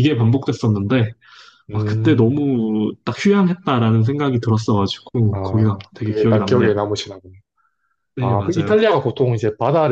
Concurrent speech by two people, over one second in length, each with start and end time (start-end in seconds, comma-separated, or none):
5.3-6.7